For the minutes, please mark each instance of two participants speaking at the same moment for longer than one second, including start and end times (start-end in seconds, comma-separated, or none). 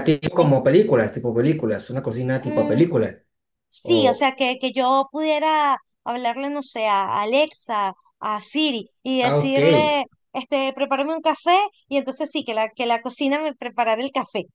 none